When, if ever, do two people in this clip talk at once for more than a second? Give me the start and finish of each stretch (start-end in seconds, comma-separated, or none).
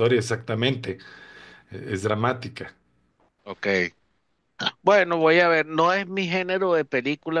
none